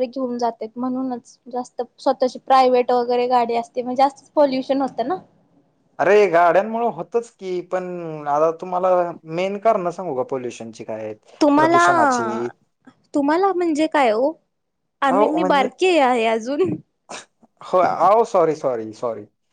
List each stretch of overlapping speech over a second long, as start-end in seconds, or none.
none